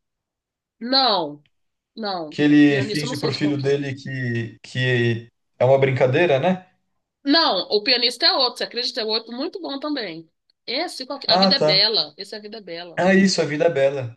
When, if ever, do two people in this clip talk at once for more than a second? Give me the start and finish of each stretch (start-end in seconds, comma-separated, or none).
2.3-3.8